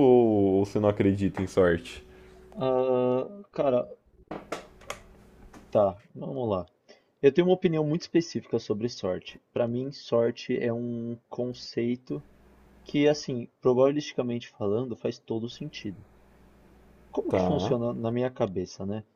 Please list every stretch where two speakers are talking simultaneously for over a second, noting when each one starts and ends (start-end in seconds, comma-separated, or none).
none